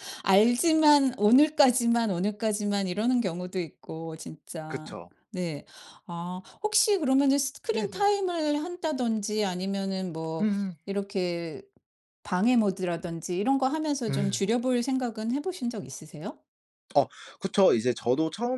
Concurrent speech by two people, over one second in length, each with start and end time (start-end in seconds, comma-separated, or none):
none